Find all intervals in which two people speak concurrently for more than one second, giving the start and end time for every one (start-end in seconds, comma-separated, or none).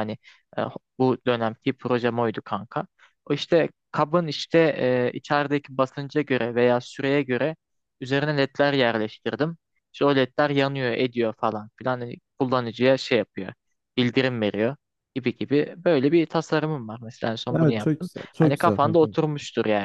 17.5-19.2